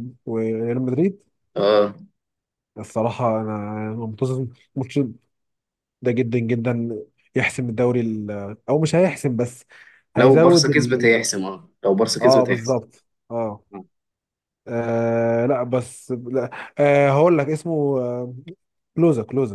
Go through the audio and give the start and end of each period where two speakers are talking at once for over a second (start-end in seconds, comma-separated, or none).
none